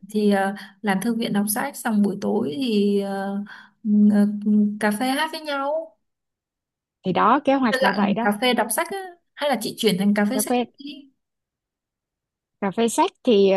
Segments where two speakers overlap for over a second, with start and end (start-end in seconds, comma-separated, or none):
none